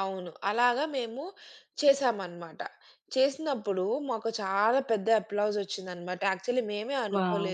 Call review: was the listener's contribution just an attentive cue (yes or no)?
yes